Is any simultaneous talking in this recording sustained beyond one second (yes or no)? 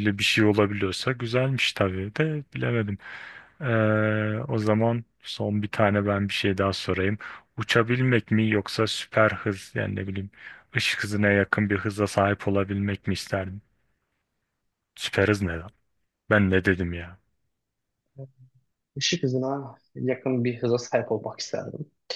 no